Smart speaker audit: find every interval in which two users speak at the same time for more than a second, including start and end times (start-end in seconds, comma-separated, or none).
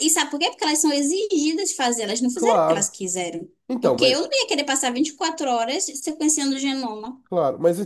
none